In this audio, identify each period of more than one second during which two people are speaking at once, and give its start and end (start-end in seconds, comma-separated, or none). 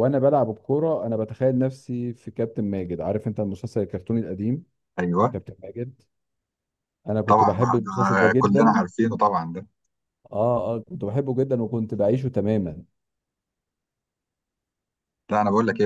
7.3-8.8